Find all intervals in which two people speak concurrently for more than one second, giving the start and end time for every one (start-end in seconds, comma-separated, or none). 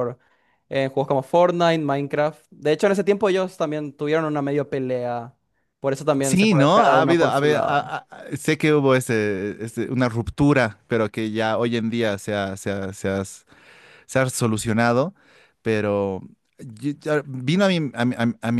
6.2-7.9